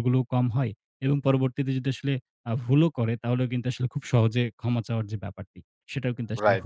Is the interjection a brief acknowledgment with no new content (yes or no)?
no